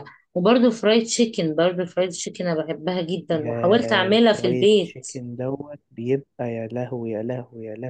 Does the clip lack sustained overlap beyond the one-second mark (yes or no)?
no